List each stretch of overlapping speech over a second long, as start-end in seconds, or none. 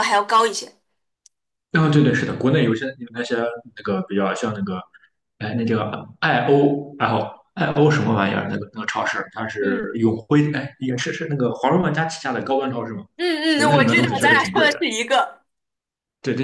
13.6-14.8